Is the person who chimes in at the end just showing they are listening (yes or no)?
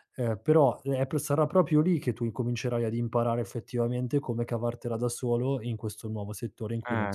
no